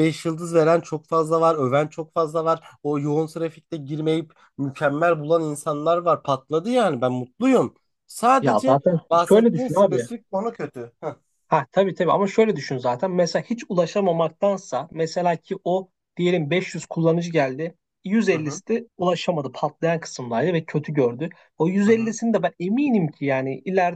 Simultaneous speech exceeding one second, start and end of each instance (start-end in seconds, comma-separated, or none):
8.4-10.1